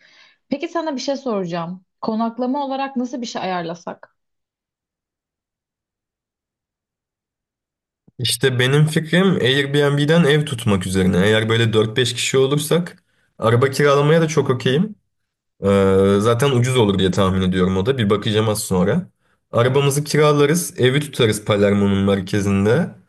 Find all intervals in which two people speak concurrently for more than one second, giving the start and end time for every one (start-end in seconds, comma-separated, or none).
none